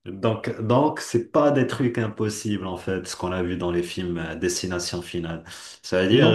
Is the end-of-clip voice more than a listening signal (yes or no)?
no